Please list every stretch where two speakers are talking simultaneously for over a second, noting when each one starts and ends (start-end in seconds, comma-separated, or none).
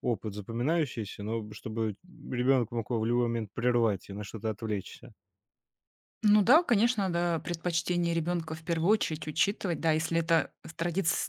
none